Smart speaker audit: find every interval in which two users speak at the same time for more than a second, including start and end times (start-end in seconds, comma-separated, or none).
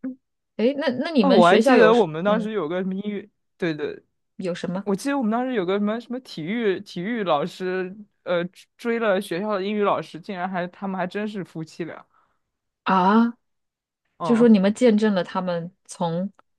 1.2-2.5